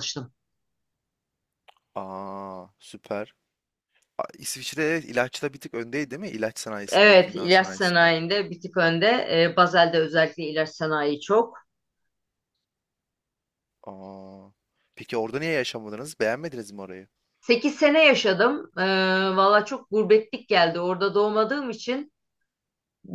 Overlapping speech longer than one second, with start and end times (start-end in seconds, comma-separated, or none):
6.9-8.1